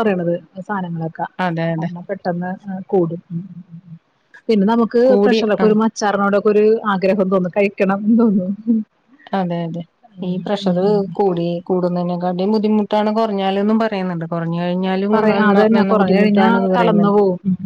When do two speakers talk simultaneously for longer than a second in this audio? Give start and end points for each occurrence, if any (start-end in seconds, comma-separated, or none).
15.1-17.2